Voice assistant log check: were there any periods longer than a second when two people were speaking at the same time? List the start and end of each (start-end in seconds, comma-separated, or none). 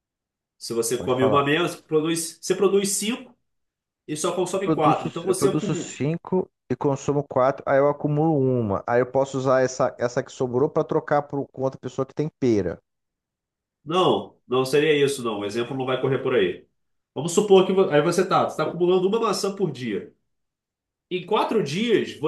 4.5-6.0